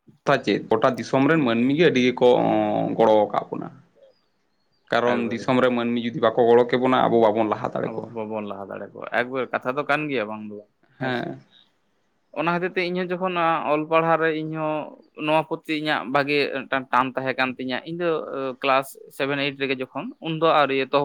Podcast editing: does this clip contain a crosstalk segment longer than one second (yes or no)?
no